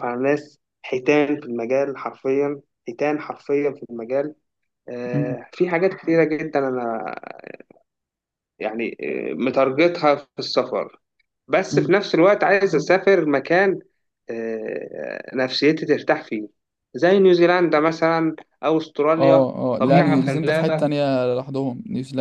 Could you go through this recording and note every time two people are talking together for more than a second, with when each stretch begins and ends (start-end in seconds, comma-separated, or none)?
19.2-20.9